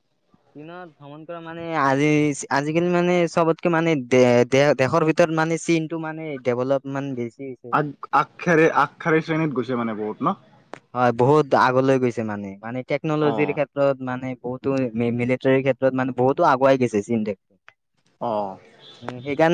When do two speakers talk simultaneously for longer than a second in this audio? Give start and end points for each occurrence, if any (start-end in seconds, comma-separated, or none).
none